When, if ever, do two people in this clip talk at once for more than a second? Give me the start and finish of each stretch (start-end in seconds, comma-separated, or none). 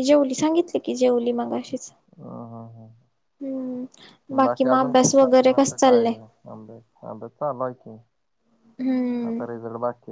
4.6-6.1